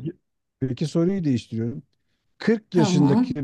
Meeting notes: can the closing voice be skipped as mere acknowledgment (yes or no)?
yes